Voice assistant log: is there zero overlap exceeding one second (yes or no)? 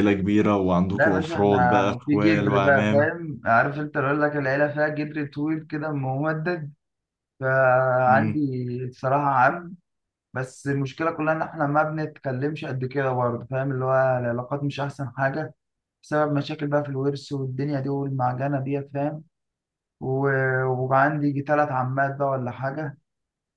no